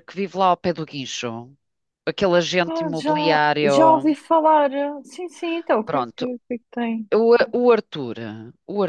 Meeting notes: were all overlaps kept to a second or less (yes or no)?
no